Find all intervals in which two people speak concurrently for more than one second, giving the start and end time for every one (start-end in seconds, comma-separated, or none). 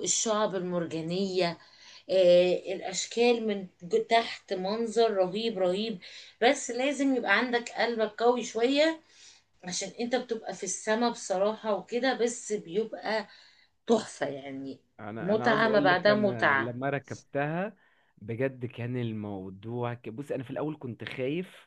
15.2-16.8